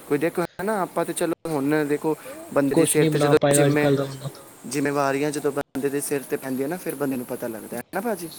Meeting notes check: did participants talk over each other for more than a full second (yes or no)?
yes